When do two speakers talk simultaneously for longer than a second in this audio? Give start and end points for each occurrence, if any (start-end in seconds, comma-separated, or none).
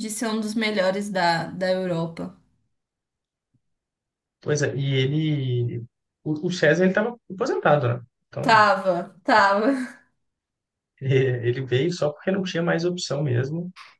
none